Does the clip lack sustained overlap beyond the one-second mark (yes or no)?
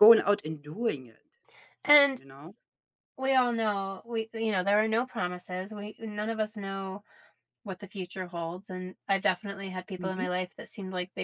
yes